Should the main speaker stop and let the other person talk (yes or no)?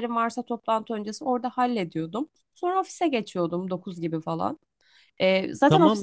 yes